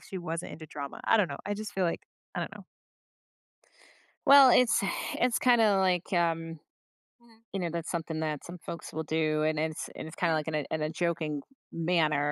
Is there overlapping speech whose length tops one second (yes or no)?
no